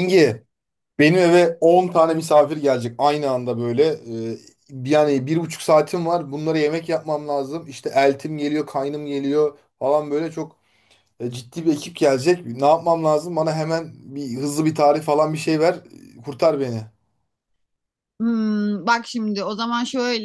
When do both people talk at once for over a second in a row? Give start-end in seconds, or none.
none